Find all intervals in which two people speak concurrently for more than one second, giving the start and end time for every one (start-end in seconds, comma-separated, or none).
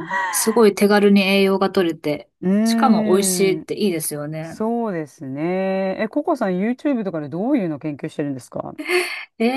2.4-3.7